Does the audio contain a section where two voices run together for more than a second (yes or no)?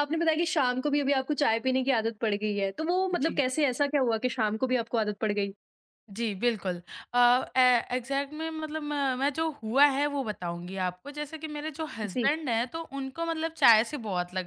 no